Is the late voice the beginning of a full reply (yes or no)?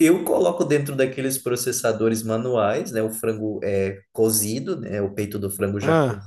no